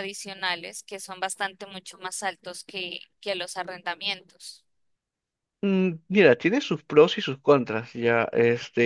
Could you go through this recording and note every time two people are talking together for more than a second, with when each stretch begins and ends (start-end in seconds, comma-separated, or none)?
none